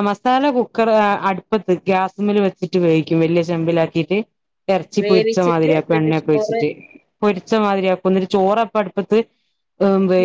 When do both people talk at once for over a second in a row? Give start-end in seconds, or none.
5.0-6.6